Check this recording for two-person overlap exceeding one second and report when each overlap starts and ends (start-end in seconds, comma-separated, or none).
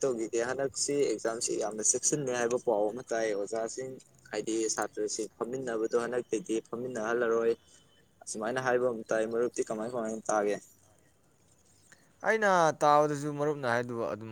none